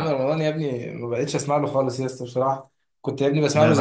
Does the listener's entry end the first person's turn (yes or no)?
no